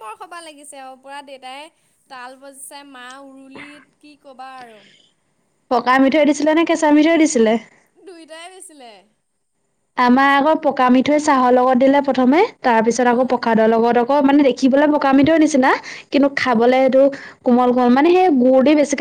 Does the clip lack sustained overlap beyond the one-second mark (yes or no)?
yes